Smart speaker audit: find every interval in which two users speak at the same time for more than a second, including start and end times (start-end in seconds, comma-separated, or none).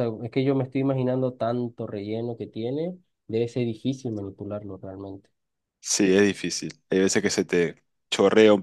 none